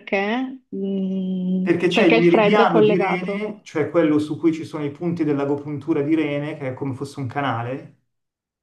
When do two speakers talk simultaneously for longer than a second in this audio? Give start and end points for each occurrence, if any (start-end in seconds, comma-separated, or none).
1.6-3.5